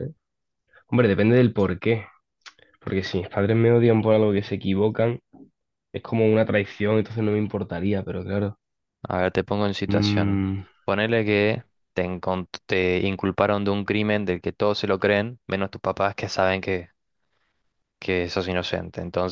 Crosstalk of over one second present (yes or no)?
no